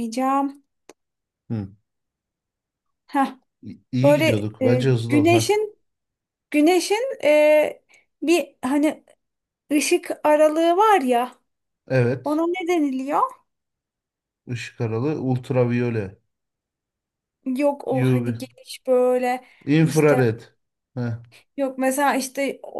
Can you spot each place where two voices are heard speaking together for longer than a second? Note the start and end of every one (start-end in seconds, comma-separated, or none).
4.0-5.5